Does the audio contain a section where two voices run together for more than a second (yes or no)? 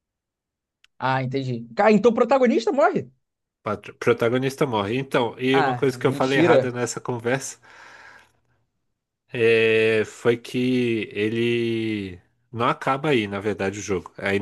yes